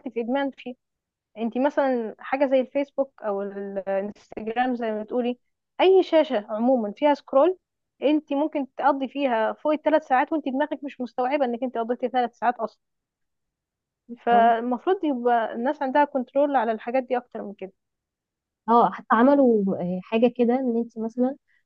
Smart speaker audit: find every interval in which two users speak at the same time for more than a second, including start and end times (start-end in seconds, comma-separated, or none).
none